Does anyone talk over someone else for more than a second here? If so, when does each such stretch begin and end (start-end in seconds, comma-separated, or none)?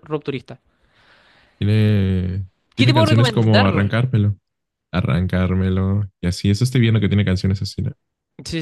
2.8-4.0